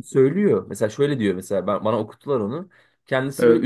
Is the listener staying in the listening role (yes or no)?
yes